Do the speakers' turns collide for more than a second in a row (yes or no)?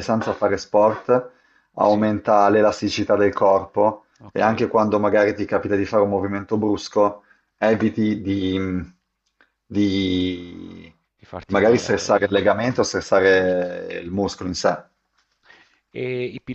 yes